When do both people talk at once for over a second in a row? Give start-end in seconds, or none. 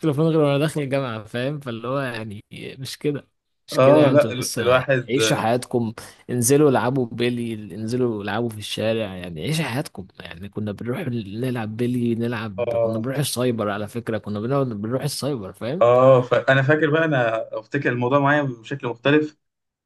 3.7-5.1